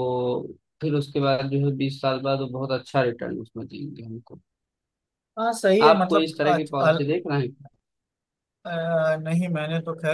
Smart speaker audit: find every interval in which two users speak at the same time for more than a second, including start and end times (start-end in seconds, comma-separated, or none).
none